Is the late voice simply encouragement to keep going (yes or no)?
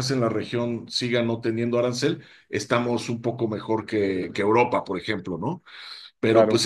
yes